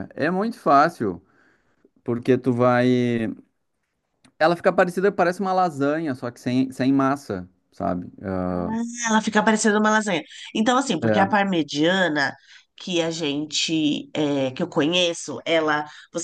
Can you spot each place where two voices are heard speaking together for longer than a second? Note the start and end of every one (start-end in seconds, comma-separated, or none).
none